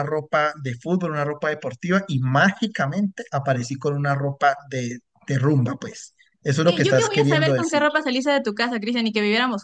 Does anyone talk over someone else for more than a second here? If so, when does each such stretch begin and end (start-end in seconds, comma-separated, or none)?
6.6-7.8